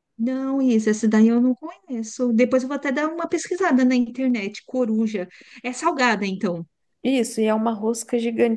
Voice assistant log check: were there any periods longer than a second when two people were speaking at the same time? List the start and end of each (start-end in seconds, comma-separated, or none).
none